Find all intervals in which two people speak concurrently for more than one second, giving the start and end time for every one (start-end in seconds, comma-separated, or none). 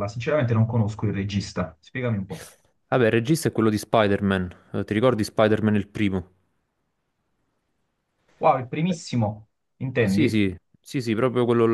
none